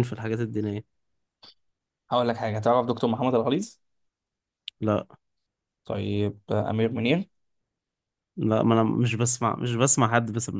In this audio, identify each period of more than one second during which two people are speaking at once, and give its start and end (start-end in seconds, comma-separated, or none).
none